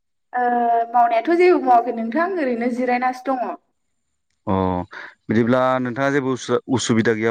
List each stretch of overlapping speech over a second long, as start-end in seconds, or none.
none